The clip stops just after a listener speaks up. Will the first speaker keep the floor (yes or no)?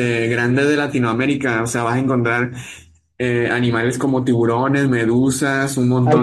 yes